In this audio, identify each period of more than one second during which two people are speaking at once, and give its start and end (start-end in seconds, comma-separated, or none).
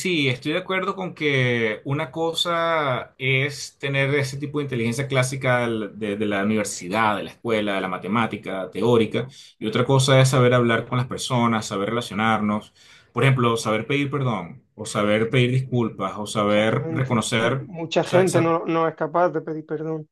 16.5-18.5